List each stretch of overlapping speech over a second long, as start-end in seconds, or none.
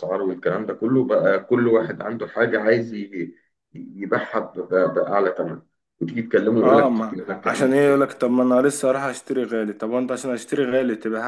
6.6-8.2